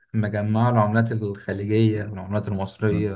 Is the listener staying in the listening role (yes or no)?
no